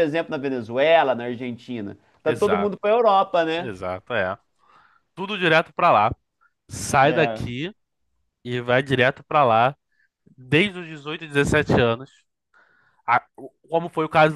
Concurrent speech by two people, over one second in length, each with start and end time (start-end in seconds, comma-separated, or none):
none